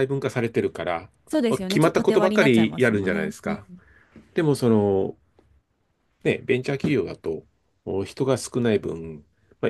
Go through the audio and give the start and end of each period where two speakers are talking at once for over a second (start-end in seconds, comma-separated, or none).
1.7-3.6